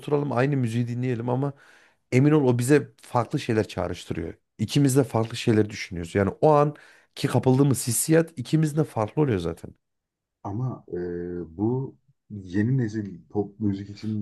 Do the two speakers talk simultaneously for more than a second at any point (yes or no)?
no